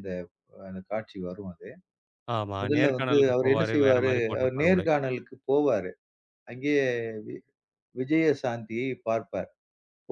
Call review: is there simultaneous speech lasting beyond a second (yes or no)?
yes